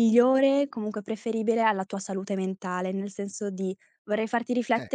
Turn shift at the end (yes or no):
no